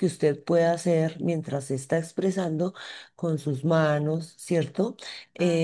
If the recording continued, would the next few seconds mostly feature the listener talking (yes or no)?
no